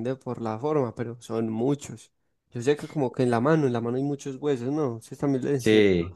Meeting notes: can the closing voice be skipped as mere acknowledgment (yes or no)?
no